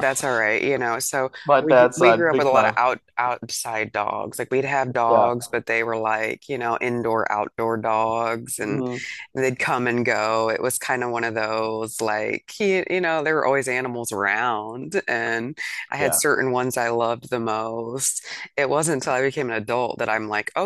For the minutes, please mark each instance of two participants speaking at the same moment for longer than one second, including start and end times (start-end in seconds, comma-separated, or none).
1.4-2.8